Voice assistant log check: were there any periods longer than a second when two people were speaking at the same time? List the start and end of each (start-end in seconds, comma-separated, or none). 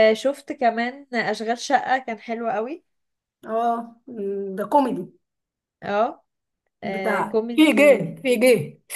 6.8-8.2